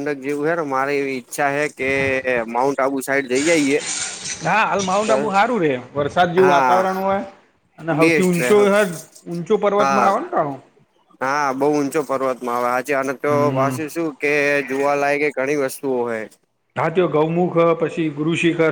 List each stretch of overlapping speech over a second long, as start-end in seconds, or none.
none